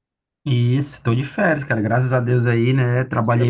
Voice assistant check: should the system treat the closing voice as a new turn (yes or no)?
no